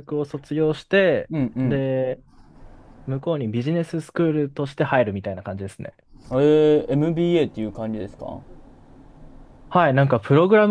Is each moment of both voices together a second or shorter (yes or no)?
yes